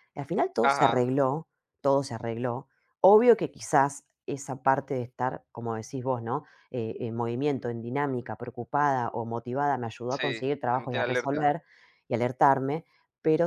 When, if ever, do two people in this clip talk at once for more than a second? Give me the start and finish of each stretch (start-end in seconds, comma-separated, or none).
10.1-11.5